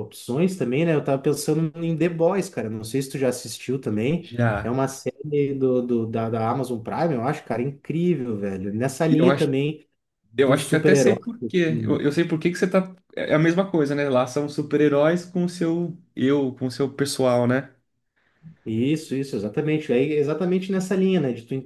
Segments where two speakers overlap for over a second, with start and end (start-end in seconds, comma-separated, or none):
10.4-12.0